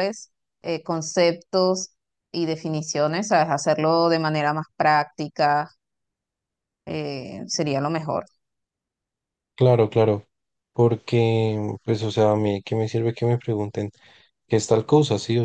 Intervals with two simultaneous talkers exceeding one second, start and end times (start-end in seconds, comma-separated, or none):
none